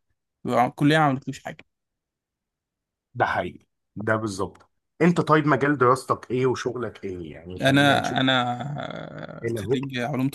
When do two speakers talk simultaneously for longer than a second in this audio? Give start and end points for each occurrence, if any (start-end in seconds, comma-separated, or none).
none